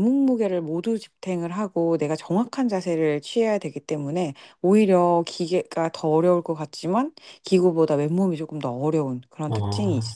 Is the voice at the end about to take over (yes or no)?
yes